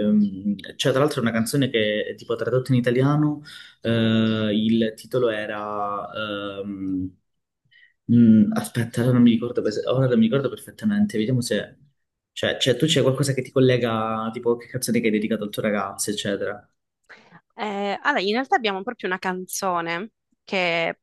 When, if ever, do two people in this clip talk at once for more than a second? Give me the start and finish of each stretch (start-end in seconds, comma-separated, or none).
none